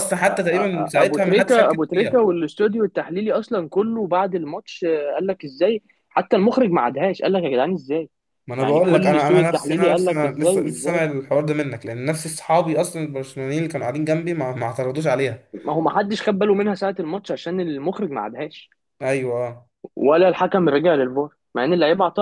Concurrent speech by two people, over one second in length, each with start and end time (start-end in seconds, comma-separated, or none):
1.0-2.2, 8.6-11.0